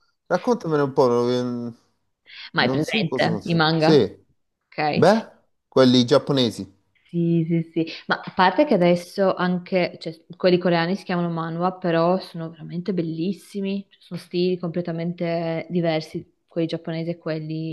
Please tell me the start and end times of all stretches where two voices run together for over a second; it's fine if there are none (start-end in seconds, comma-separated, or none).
2.5-4.0